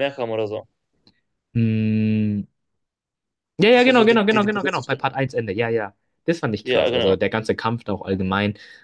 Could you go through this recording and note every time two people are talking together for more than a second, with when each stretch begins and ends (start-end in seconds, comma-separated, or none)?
3.7-5.0